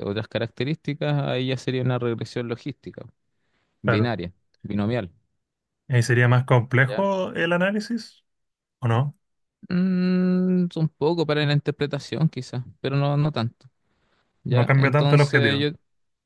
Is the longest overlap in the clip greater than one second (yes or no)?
yes